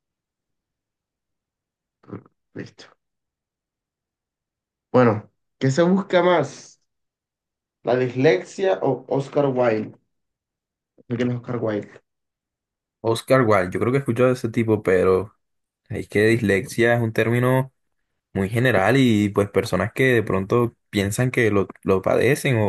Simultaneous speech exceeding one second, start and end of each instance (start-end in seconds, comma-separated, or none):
none